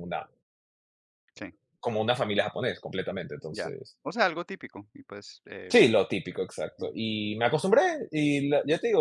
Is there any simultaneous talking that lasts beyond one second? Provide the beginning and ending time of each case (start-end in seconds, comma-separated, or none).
none